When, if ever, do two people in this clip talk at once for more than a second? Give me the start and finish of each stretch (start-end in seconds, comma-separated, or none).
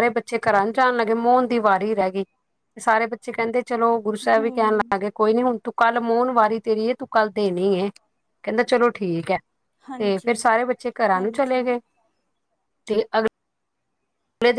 none